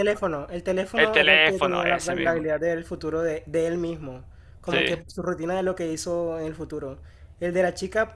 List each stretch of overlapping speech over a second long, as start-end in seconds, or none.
0.9-2.4